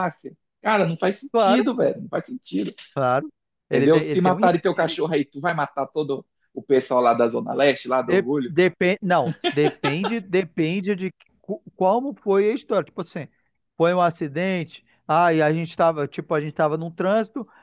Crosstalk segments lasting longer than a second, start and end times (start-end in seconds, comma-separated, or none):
3.7-5.0